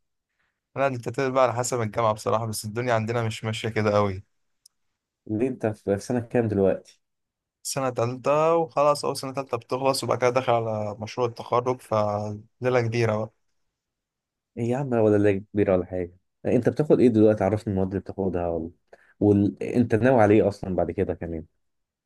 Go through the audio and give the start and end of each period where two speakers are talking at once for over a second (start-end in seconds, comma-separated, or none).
none